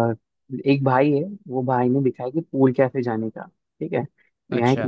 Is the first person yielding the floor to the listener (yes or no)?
no